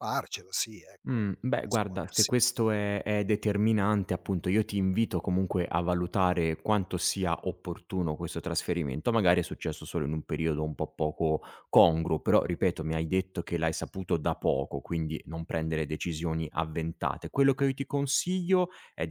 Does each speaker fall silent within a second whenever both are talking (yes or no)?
no